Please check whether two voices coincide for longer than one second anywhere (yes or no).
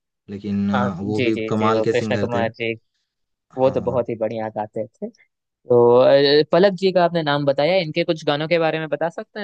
yes